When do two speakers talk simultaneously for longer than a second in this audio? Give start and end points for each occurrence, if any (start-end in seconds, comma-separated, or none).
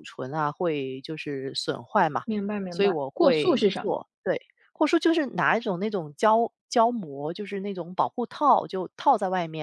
2.7-4.0